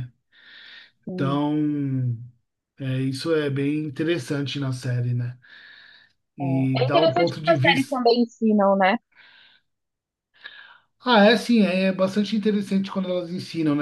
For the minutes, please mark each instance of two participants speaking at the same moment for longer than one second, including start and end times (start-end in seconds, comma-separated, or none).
6.4-8.0